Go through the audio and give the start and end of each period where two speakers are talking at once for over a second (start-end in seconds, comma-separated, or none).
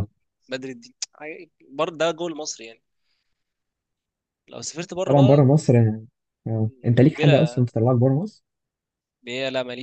none